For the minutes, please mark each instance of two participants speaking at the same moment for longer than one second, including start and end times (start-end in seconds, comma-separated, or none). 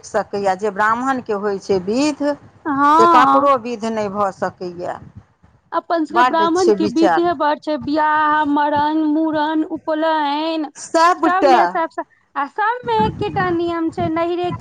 none